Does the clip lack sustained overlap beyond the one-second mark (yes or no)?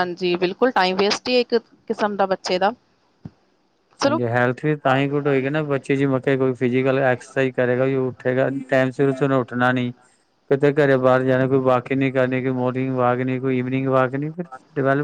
yes